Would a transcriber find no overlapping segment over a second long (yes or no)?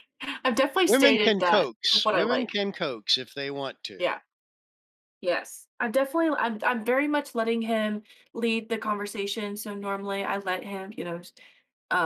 no